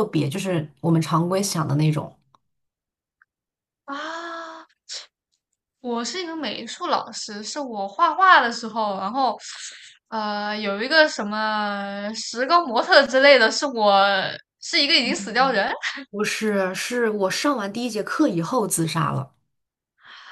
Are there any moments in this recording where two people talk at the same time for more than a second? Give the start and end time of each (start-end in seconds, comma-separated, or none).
none